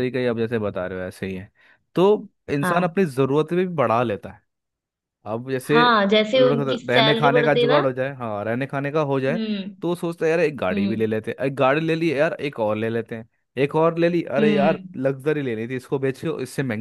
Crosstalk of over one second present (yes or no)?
yes